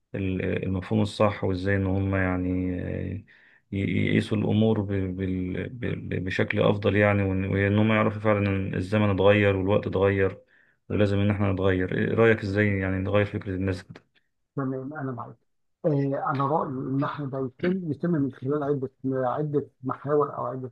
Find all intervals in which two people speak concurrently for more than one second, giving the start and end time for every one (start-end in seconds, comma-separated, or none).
none